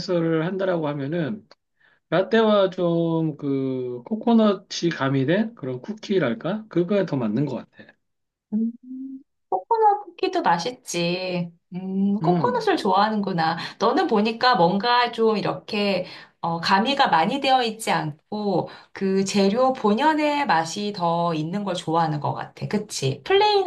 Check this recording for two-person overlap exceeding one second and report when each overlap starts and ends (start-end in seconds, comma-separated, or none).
none